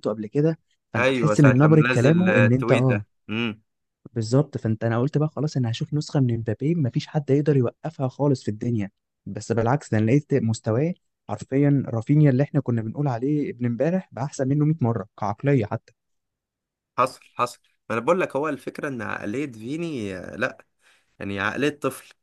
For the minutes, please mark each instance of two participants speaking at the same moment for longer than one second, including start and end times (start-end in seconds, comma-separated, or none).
0.9-3.0